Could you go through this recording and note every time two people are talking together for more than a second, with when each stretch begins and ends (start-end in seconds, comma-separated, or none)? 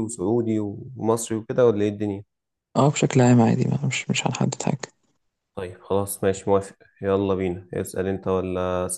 none